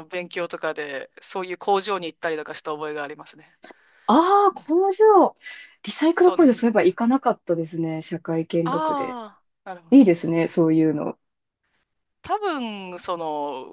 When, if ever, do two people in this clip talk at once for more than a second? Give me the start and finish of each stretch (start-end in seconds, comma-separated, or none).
none